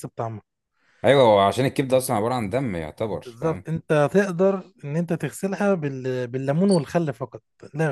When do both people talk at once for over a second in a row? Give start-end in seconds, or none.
none